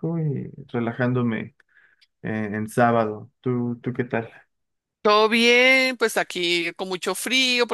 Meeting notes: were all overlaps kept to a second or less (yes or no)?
yes